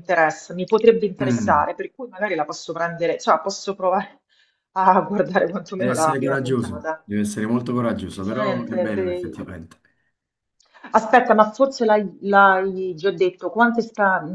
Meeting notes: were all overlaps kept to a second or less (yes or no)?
no